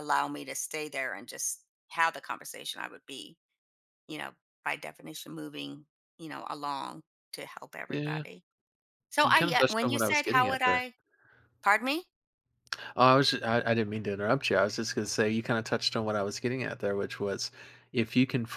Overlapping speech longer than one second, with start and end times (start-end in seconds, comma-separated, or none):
9.2-10.8